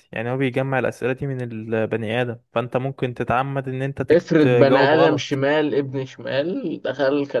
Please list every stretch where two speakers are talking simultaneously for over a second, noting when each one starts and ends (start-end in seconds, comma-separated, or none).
4.1-5.4